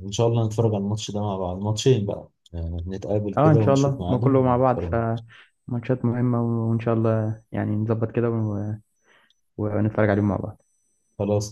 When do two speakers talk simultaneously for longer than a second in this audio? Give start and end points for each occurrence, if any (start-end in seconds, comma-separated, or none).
3.4-5.0